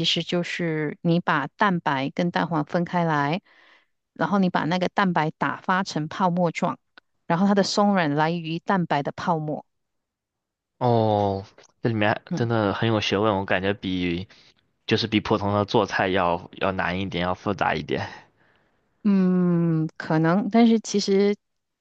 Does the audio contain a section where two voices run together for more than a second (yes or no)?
no